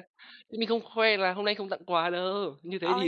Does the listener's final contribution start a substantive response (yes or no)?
yes